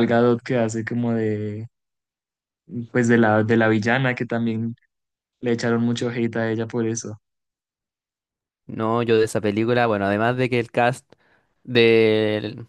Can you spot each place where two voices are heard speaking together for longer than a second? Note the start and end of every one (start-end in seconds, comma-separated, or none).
none